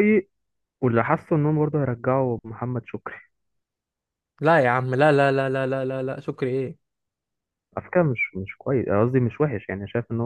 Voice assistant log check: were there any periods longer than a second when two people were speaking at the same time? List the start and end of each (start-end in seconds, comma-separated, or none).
none